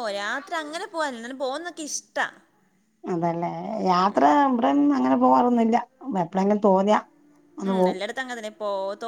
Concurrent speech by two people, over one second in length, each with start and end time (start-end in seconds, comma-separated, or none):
none